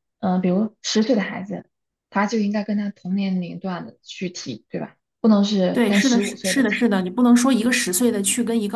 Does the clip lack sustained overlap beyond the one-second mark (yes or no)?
no